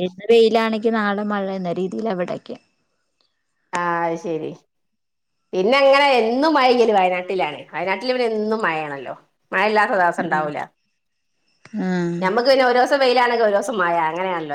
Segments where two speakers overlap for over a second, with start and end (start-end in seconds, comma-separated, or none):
none